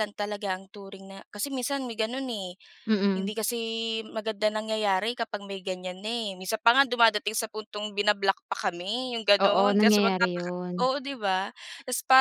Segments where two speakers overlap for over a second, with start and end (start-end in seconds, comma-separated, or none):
9.4-10.9